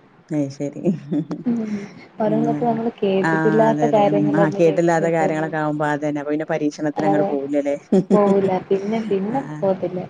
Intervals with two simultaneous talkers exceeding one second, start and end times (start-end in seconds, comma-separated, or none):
3.3-5.5